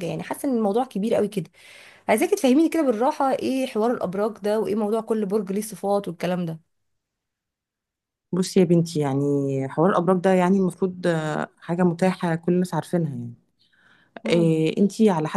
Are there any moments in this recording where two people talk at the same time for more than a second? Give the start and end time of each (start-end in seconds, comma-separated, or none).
none